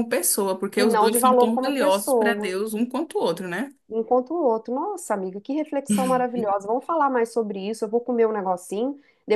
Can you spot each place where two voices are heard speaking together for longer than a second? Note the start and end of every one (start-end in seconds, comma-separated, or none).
0.7-2.6